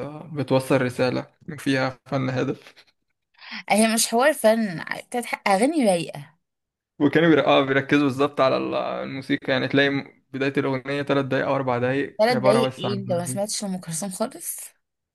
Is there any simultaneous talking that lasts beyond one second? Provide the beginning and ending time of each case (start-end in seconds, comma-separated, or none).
12.2-13.5